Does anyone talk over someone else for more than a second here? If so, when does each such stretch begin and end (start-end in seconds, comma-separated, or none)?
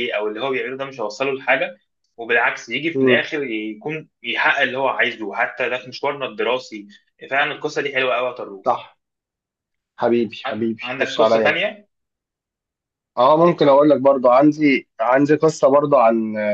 10.5-11.7